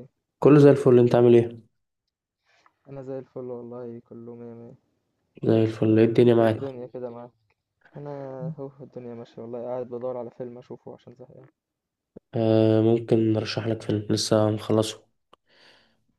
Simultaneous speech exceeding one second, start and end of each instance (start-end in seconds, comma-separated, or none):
none